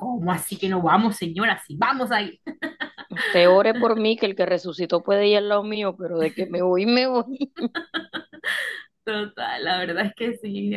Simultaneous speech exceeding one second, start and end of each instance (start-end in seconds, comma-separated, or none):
none